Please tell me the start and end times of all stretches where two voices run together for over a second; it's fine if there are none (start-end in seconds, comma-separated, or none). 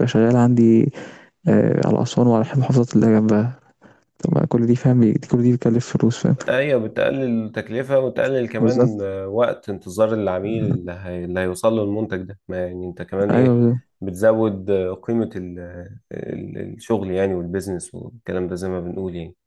none